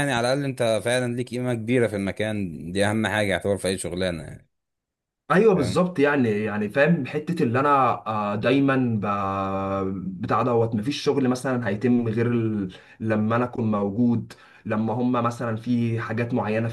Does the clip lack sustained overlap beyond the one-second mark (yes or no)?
yes